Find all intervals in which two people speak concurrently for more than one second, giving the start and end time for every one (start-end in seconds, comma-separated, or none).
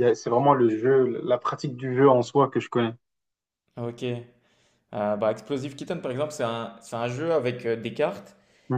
none